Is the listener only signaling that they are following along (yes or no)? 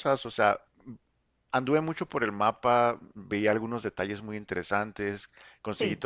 yes